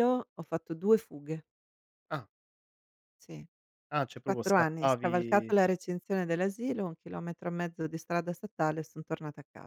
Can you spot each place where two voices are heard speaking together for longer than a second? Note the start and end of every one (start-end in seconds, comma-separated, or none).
4.2-5.5